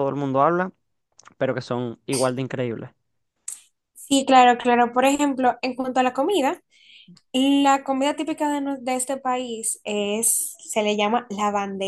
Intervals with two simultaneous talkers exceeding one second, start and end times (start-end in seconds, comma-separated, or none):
none